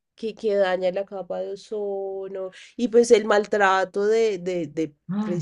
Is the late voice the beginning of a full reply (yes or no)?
no